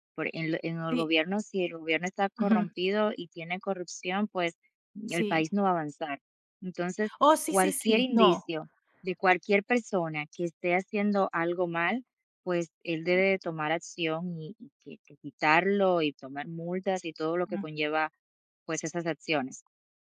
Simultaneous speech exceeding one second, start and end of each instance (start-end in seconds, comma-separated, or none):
7.2-8.5